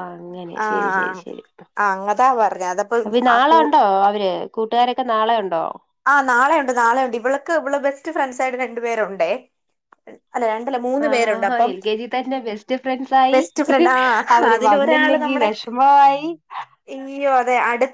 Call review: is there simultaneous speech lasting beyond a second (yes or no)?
no